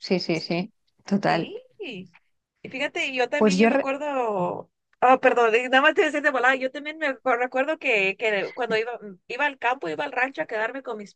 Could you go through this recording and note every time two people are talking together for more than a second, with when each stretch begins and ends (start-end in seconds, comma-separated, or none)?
none